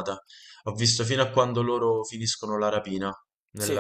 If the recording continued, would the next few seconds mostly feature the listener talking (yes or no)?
no